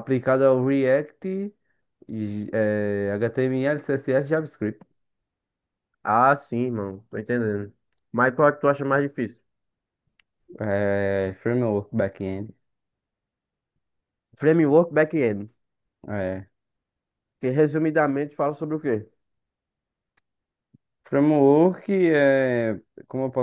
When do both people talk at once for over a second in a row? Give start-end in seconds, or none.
none